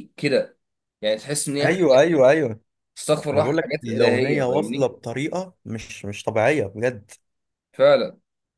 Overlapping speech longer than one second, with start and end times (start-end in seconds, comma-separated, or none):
3.3-4.9